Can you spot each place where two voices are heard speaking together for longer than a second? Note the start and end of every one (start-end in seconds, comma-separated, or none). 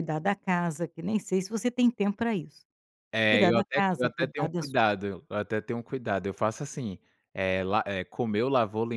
3.3-4.8